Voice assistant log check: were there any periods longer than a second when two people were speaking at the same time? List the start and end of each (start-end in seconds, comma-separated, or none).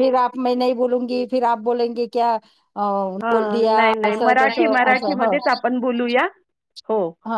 3.2-5.2